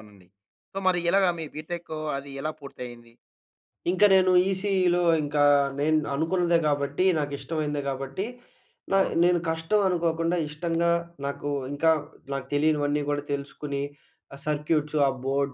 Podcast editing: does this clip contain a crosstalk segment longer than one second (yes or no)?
no